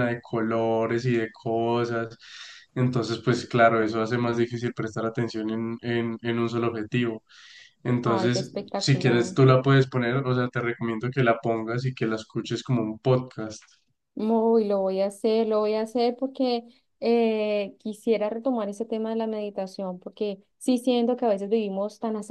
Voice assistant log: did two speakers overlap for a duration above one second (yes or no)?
yes